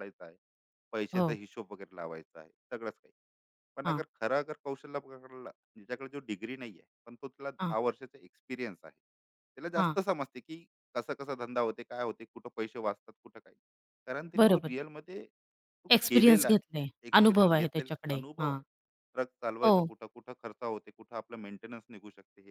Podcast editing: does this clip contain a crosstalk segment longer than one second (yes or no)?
yes